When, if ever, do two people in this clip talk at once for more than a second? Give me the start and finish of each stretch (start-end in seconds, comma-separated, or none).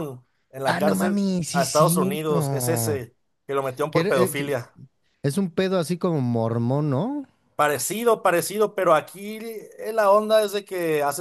0.6-3.0